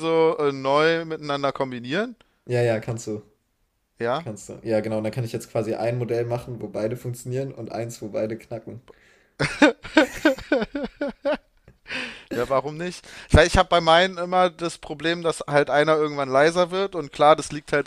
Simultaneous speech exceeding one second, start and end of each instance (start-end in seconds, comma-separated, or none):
none